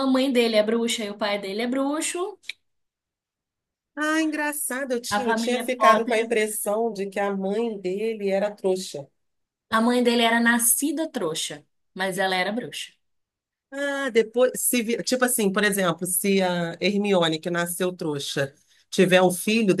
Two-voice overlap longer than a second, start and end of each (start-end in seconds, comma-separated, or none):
5.1-6.3